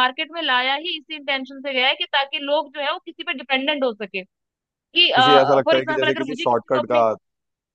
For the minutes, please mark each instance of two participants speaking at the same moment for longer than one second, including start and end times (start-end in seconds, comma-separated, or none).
5.6-7.0